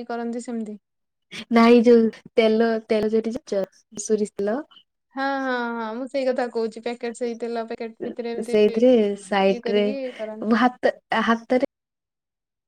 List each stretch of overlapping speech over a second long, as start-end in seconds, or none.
none